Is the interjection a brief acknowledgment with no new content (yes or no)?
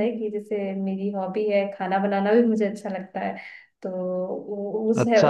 no